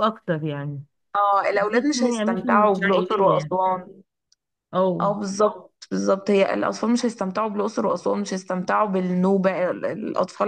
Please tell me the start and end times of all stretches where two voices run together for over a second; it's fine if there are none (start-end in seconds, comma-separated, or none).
1.5-3.5